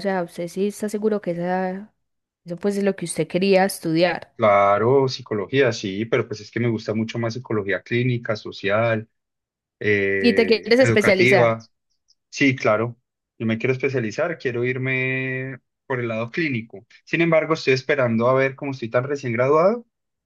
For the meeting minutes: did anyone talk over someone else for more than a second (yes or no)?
yes